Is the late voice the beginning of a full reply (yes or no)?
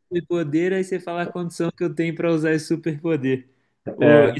no